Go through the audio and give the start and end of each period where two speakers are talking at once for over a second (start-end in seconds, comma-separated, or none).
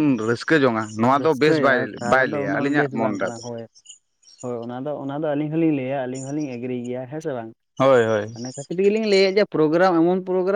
1.1-3.4